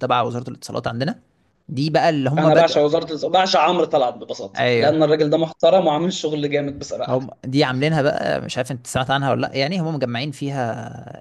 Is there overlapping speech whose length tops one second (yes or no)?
no